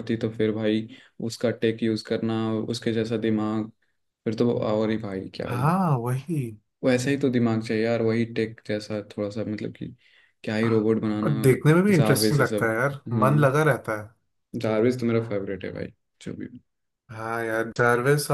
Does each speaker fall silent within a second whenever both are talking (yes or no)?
no